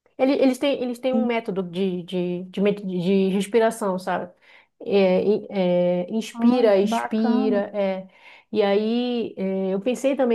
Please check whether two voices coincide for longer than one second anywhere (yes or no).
yes